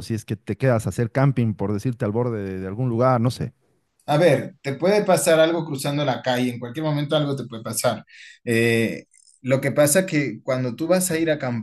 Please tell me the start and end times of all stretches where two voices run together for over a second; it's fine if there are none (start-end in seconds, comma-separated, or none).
none